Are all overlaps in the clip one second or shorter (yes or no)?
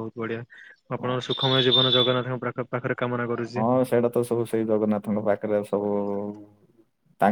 yes